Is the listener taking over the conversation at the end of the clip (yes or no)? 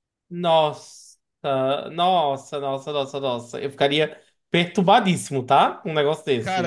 yes